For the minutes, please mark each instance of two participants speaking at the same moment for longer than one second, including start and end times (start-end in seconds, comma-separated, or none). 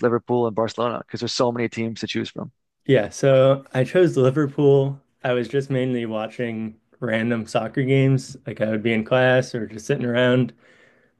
none